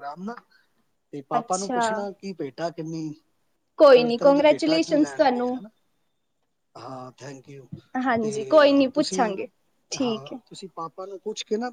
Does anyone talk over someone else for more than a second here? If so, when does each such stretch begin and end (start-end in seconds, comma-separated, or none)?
3.9-5.6